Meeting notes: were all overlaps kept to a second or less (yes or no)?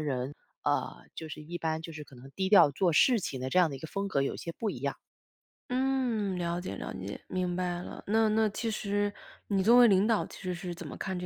yes